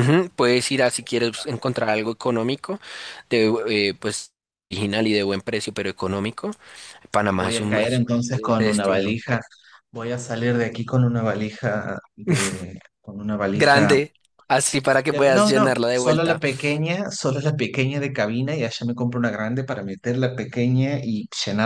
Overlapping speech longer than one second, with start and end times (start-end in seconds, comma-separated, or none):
7.3-9.2, 15.1-16.4